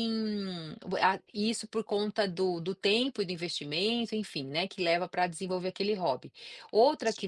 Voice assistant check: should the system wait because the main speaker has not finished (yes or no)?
yes